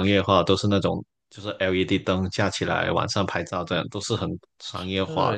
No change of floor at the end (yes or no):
no